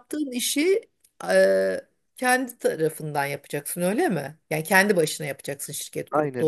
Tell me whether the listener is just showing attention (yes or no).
no